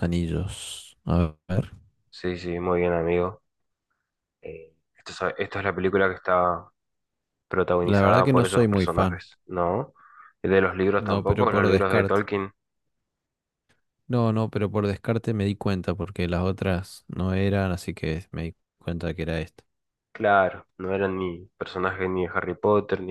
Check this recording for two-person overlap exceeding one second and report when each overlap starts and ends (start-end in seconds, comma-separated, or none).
7.8-9.2, 11.0-12.3